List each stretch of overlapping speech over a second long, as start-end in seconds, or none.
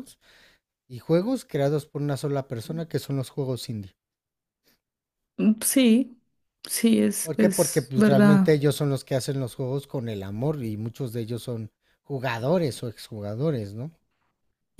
7.2-8.5